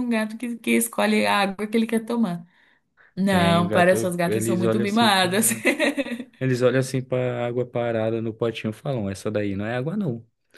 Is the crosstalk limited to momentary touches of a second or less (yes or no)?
no